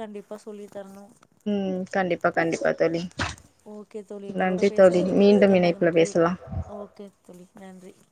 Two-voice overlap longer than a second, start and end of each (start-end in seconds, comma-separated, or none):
4.4-6.1